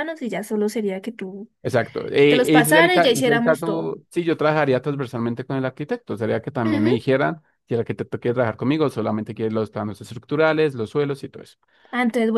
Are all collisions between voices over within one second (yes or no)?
no